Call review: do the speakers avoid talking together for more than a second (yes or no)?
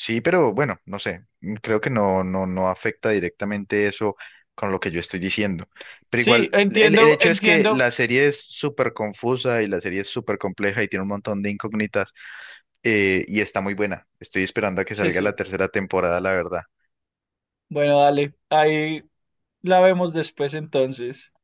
no